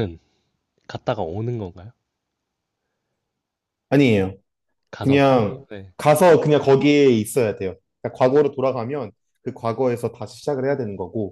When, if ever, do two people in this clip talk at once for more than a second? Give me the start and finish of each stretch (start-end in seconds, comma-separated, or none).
none